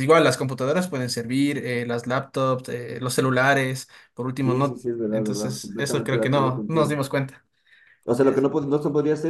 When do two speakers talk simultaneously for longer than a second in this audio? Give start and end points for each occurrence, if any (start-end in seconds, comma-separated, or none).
4.4-7.0